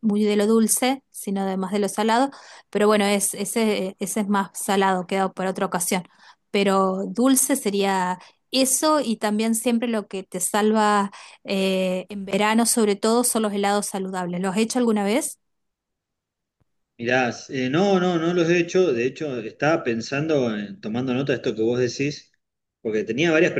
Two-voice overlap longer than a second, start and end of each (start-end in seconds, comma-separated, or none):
none